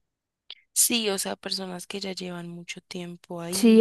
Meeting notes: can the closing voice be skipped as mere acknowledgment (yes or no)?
no